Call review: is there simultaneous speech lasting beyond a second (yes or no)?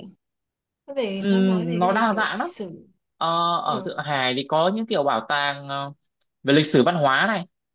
yes